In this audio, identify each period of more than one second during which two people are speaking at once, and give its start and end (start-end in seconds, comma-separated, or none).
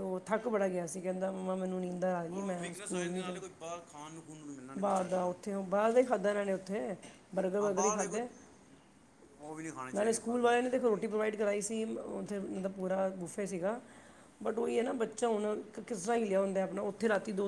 none